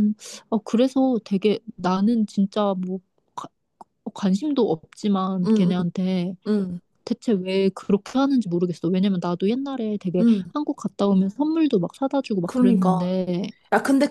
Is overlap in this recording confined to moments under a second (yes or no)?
yes